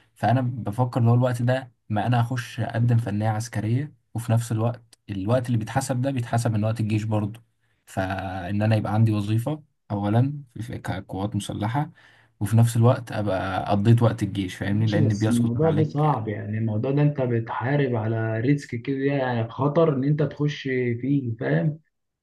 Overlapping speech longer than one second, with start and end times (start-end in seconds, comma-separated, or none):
14.7-16.2